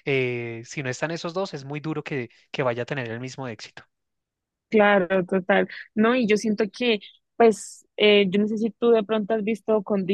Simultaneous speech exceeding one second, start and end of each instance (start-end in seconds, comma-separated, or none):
none